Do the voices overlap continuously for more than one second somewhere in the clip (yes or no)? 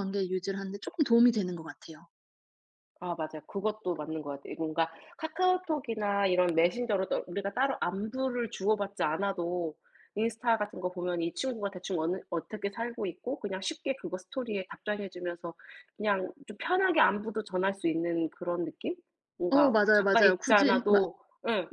yes